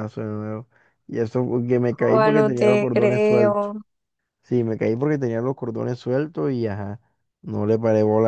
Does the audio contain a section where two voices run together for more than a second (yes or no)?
yes